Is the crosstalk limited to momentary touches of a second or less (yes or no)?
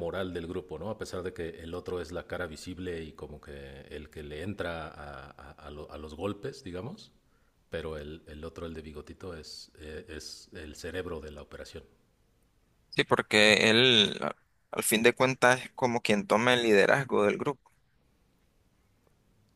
yes